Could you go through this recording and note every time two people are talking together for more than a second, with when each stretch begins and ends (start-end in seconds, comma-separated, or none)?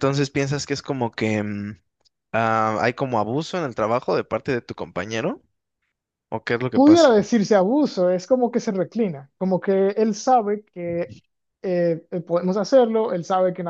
none